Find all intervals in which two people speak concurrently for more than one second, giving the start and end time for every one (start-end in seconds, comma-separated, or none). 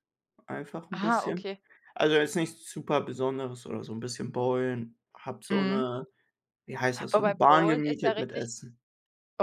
7.1-8.4